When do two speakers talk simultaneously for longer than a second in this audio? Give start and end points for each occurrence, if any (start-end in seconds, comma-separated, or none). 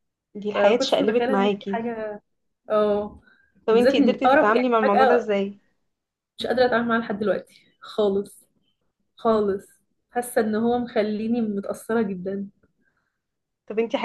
0.5-1.8, 3.7-5.3